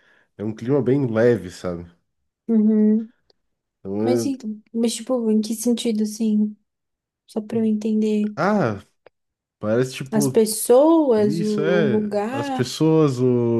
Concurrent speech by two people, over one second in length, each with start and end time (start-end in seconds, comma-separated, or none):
11.2-12.7